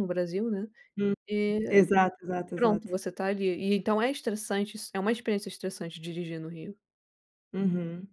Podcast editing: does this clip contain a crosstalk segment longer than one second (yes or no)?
no